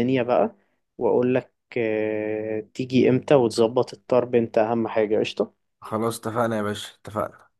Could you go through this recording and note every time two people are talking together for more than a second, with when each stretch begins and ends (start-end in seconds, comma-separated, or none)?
none